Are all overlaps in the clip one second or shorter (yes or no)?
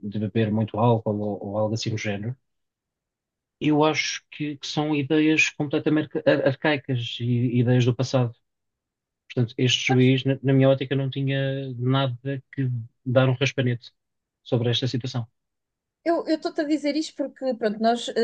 yes